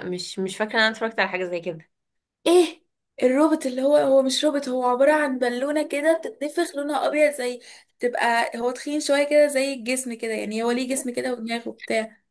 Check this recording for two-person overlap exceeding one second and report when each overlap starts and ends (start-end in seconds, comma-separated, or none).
none